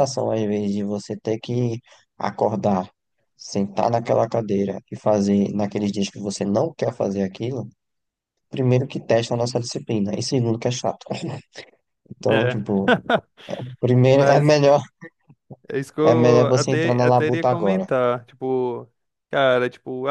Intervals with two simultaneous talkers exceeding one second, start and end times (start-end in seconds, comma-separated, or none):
16.0-17.9